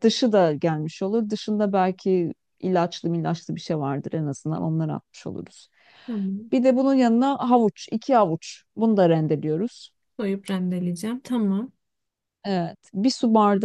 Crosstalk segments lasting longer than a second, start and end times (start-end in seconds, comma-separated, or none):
none